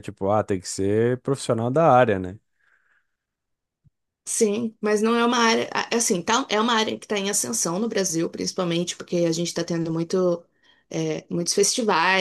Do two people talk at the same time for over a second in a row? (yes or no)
no